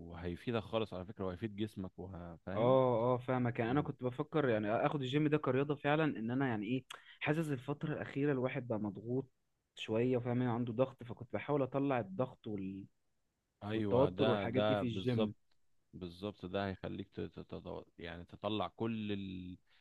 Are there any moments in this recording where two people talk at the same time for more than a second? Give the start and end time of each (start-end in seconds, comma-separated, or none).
13.7-15.3